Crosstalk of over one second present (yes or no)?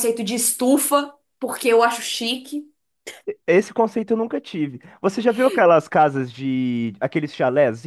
no